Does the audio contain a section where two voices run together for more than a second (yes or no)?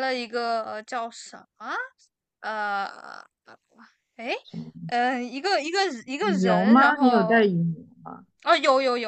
yes